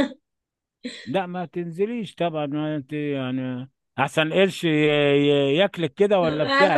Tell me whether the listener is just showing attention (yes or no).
no